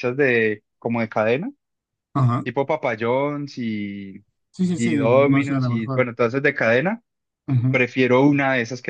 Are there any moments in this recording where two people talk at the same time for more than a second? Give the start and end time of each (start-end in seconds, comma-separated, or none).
4.8-6.0